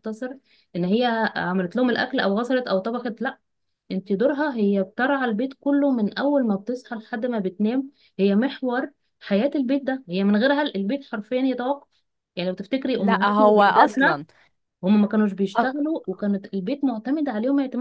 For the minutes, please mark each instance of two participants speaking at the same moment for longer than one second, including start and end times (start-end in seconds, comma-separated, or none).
13.0-14.2